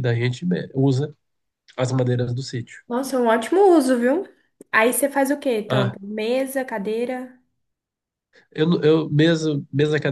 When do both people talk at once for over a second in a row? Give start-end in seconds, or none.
none